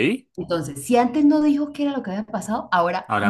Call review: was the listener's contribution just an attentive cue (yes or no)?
yes